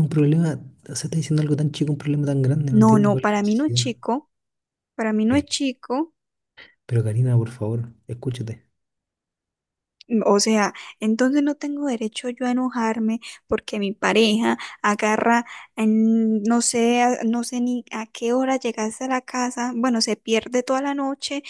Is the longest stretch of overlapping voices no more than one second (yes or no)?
no